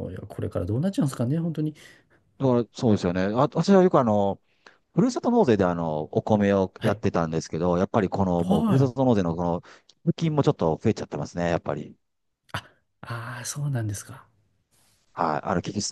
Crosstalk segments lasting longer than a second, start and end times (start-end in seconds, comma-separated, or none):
none